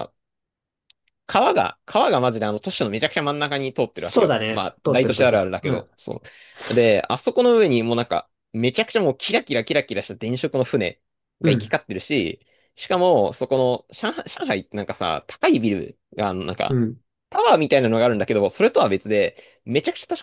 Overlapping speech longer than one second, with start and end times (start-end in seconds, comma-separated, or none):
3.9-5.9